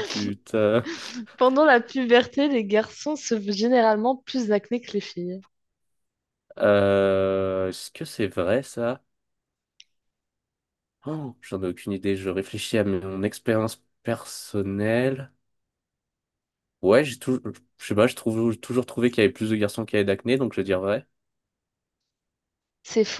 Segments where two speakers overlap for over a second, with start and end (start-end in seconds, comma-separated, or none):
none